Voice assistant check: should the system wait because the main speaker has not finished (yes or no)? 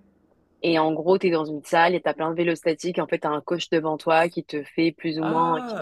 yes